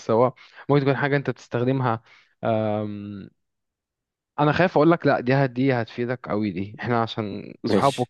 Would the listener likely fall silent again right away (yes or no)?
yes